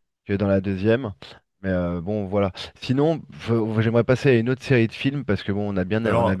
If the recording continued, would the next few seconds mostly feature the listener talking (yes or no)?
no